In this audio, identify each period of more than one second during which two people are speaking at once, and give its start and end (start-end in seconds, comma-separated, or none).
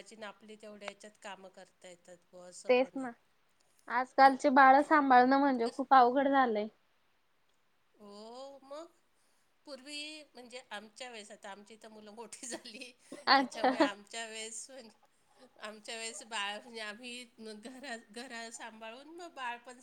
none